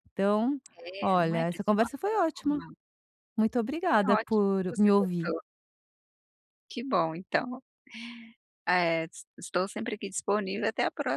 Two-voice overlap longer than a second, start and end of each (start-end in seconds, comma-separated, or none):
1.0-2.6, 3.9-5.3